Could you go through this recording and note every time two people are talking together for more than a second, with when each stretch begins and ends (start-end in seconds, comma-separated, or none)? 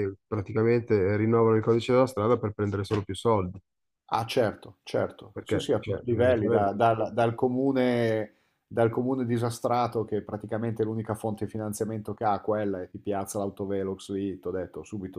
5.3-6.7